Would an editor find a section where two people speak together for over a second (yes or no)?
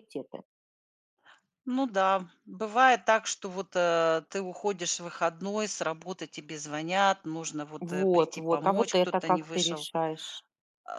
yes